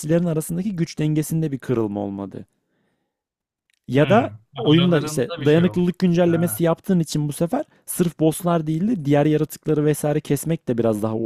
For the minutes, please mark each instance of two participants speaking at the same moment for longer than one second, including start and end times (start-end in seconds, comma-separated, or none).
4.0-6.6